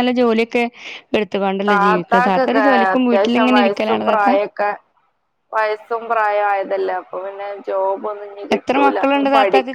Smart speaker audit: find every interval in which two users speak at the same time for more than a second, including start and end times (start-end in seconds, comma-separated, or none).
3.1-4.3